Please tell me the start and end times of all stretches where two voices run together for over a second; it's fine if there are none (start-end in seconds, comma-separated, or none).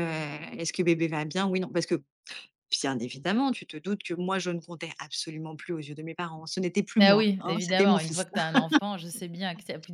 7.0-8.2